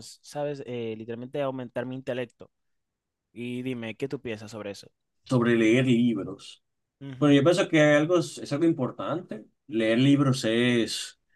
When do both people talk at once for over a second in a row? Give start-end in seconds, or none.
none